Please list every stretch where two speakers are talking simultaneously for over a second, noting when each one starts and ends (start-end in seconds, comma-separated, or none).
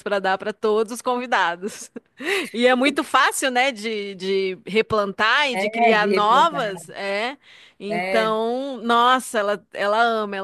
5.5-6.9